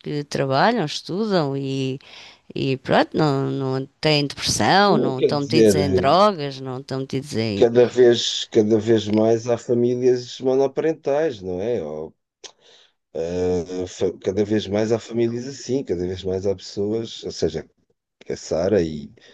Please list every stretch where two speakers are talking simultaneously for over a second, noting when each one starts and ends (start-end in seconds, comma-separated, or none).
4.9-6.2